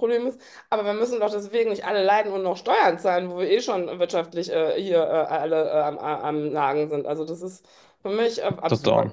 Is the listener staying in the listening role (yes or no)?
no